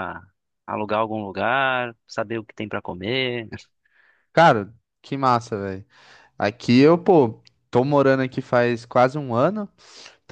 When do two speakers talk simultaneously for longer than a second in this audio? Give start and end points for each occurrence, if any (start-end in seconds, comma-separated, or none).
none